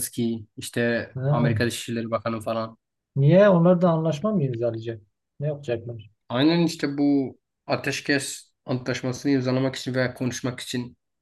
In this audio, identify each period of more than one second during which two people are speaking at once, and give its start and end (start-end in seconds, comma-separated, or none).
none